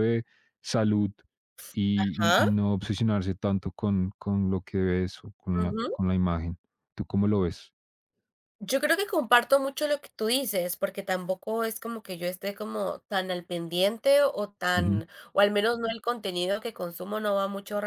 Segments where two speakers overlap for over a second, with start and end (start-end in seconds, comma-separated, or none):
none